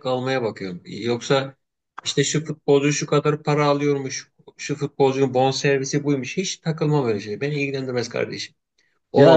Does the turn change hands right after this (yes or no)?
no